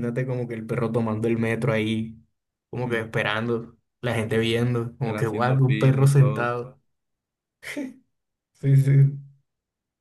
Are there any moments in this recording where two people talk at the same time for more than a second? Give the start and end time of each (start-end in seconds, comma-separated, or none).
5.0-6.5